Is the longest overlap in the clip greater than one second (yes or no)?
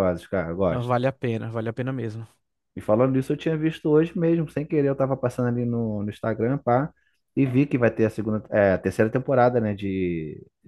no